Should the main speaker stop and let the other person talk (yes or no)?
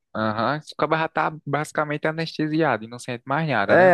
yes